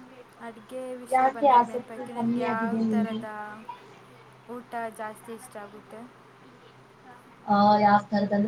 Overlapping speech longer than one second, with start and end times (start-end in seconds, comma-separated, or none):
1.2-3.2